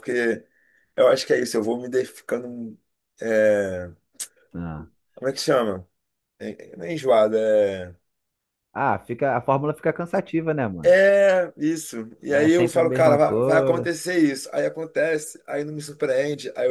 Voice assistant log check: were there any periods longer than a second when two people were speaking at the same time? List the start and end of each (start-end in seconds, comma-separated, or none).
12.3-13.9